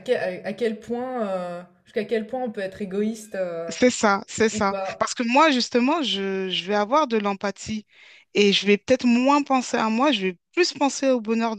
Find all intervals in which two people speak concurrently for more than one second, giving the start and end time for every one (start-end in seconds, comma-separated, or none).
none